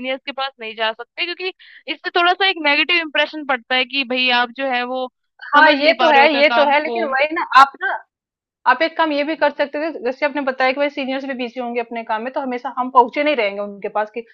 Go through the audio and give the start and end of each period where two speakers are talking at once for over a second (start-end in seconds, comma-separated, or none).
5.6-7.0